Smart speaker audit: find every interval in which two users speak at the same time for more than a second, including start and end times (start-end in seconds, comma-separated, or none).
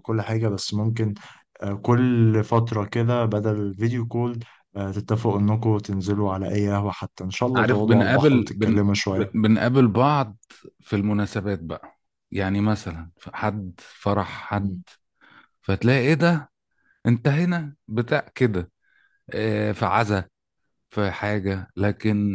7.5-8.8